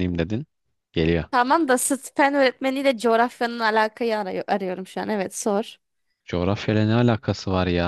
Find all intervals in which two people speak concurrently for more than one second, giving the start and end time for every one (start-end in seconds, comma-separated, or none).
none